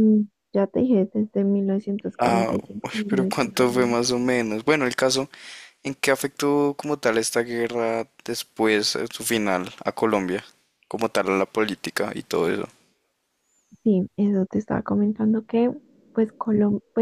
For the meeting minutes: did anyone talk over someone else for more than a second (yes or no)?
yes